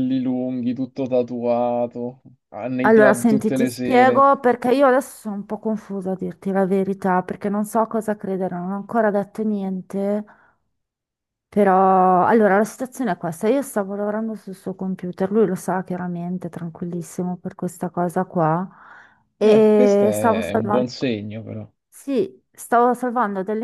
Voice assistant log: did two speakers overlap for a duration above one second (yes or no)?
yes